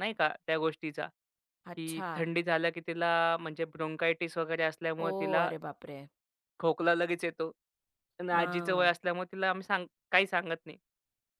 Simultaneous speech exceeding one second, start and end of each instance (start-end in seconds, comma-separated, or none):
none